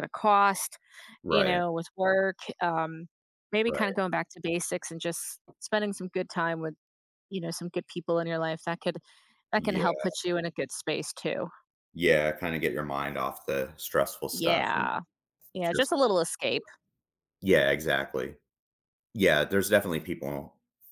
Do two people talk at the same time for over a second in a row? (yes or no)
no